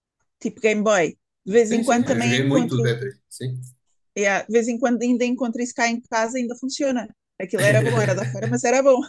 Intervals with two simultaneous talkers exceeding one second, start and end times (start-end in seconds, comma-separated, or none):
1.6-3.0